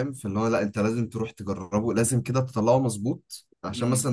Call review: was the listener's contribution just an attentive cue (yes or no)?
yes